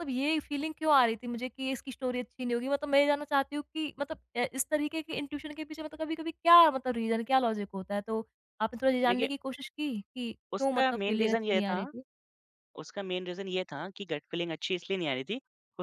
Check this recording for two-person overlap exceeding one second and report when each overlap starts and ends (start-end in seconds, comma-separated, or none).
10.5-11.8